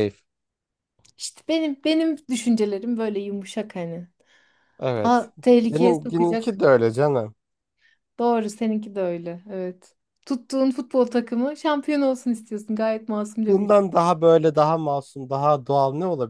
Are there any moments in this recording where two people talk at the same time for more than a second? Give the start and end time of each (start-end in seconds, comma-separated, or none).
5.0-6.6